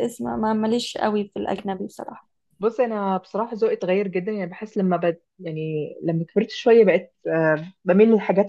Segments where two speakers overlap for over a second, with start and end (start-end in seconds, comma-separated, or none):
none